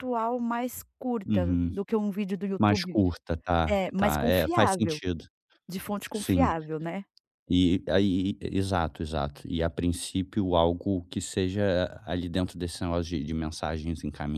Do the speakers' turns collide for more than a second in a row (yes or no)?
yes